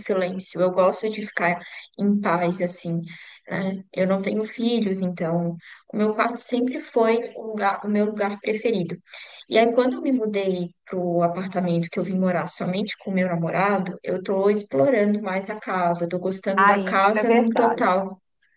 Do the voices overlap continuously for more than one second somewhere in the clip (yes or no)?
yes